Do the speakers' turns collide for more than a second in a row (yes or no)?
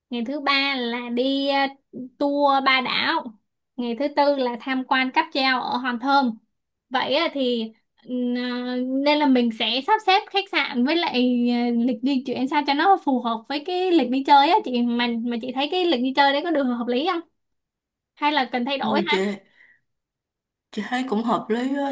no